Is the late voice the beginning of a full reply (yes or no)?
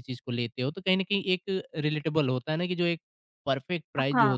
no